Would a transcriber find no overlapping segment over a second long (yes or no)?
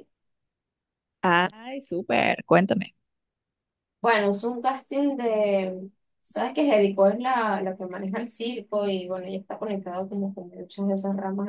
yes